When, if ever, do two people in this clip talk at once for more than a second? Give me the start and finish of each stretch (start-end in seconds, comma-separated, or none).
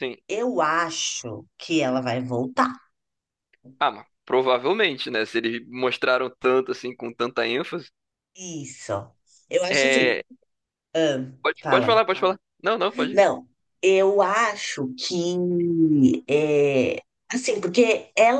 none